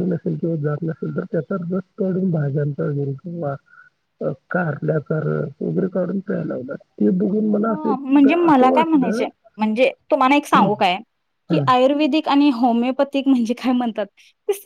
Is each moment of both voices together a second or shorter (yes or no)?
no